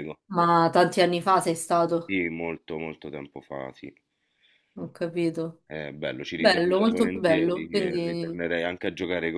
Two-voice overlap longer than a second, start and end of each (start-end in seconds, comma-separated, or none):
6.3-8.4